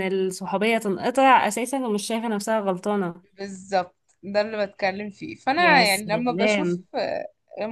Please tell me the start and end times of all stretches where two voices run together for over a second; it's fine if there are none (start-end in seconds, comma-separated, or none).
5.6-6.8